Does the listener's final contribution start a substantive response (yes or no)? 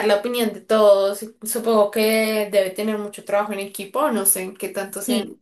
yes